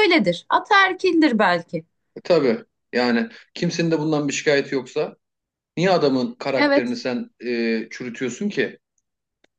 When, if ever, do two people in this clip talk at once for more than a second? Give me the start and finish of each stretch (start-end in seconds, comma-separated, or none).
none